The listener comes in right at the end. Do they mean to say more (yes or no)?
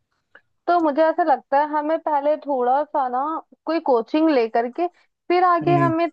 no